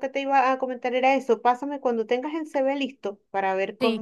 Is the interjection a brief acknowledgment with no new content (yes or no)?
yes